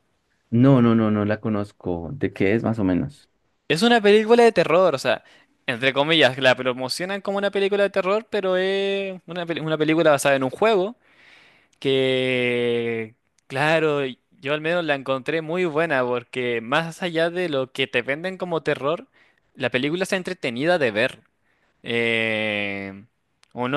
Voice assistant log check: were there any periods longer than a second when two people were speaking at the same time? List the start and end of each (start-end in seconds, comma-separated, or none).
none